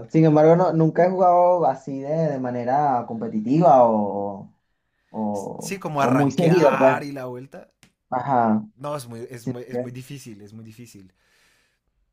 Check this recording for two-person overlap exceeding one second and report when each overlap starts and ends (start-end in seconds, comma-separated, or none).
5.6-7.0